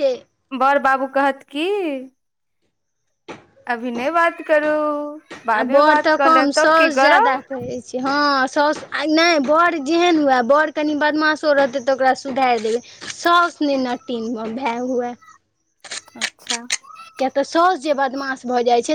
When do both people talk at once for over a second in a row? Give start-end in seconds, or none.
5.5-7.4